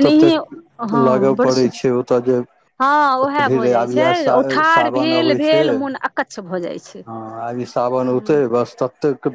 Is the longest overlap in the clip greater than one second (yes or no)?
yes